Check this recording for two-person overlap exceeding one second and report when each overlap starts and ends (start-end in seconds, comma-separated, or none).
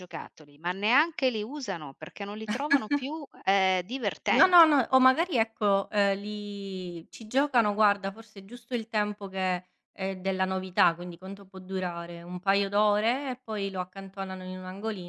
none